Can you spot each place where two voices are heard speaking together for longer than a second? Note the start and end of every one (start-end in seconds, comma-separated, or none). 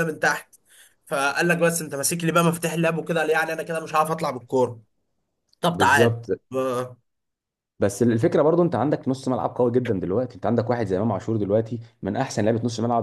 none